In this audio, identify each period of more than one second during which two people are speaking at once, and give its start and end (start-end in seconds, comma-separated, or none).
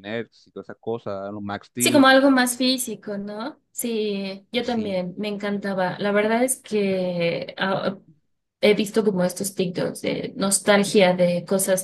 none